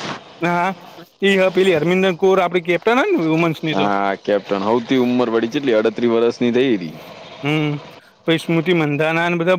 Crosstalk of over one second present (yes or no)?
no